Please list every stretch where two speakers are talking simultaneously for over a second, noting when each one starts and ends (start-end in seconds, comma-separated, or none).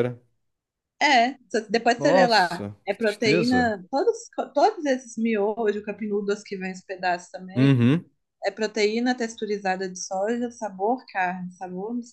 2.0-3.8